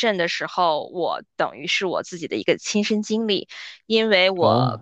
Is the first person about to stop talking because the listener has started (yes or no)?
no